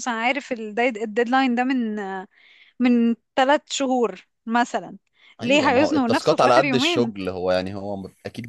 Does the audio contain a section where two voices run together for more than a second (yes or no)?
yes